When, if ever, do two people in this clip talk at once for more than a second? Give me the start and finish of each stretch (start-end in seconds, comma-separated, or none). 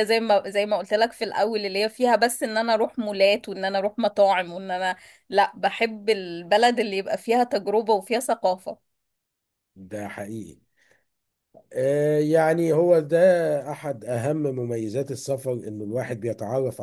none